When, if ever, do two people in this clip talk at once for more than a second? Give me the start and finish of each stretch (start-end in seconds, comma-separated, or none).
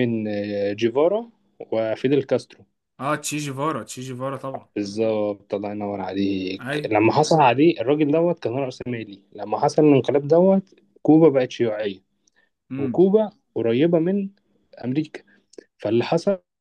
none